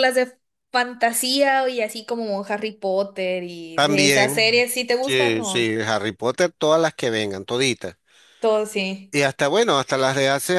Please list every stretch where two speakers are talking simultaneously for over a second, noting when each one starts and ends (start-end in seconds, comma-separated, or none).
3.7-5.7